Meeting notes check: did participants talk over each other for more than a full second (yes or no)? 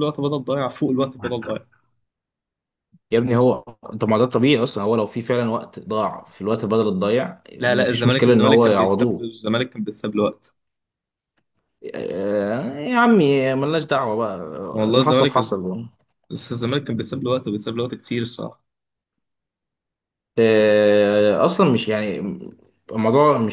yes